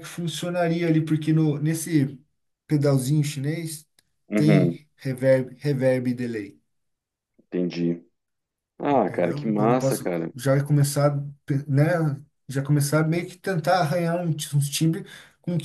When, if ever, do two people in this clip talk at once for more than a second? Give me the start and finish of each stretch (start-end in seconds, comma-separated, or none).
8.9-10.3